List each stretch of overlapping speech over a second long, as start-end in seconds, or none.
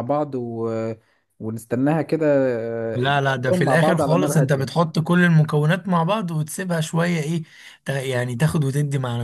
3.0-4.7